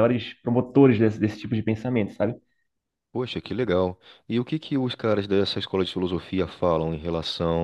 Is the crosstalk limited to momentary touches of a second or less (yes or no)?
yes